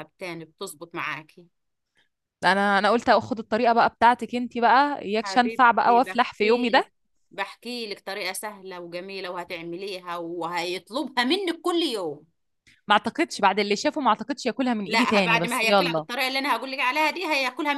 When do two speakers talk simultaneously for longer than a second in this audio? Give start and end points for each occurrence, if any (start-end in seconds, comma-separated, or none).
5.2-6.9, 14.9-16.1